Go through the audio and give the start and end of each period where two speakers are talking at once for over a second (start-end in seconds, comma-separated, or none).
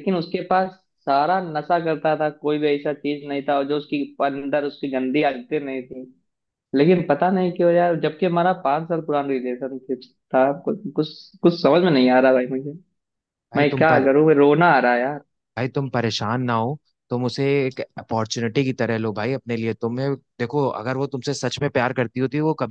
none